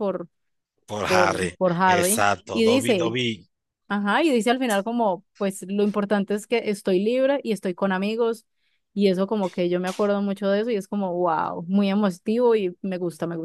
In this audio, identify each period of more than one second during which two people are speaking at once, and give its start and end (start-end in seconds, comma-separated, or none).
1.0-3.1